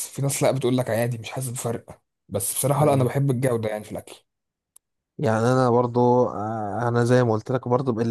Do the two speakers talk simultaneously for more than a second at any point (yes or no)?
no